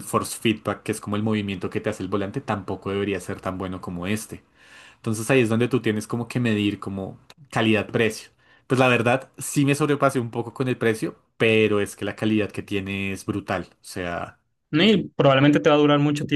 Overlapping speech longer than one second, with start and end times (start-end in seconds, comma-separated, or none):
none